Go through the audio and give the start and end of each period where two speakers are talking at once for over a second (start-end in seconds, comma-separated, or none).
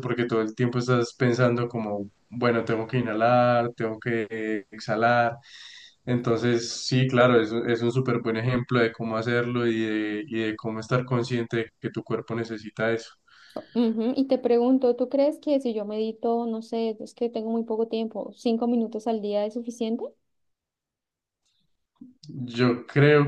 none